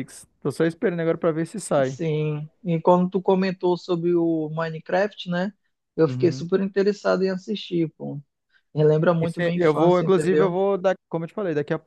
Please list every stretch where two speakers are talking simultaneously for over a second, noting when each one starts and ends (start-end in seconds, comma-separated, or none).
9.2-10.6